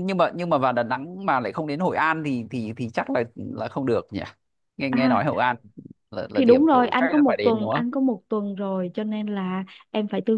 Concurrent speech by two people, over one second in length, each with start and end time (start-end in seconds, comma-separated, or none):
6.3-7.8